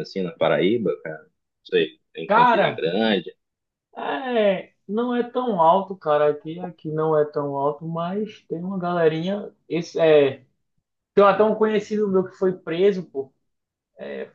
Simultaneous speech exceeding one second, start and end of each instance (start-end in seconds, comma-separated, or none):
none